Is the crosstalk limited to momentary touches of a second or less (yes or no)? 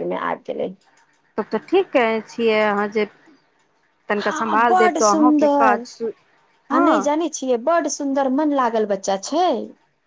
no